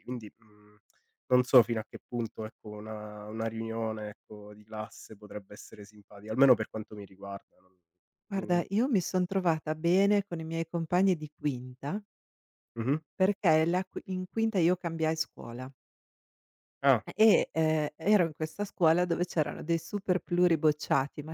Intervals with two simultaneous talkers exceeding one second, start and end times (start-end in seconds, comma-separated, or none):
none